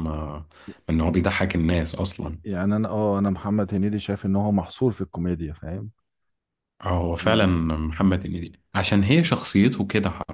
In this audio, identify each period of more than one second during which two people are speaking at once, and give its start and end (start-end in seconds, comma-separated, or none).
none